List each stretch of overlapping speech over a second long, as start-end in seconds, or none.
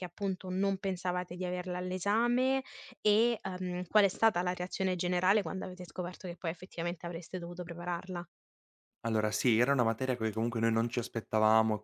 none